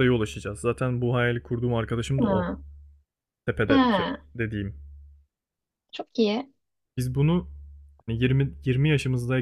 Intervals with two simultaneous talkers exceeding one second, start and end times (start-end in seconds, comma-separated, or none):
none